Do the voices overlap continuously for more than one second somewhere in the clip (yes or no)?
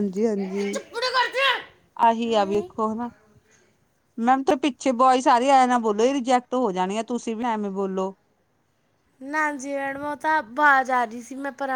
no